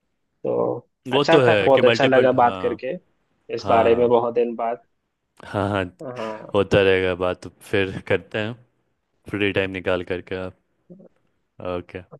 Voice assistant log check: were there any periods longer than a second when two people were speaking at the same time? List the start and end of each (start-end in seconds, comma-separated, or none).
1.1-2.8